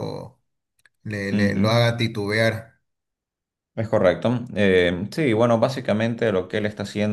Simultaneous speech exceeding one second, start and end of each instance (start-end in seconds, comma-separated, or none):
none